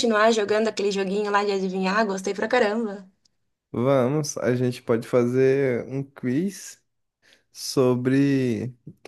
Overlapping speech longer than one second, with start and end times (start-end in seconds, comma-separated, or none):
none